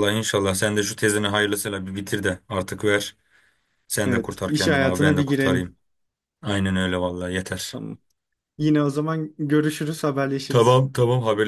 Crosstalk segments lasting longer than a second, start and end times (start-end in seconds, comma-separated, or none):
4.0-5.8